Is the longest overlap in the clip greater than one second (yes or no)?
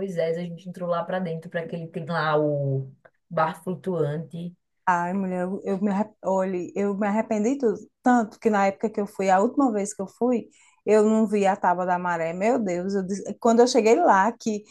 no